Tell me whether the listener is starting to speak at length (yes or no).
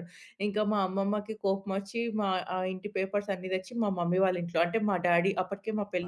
yes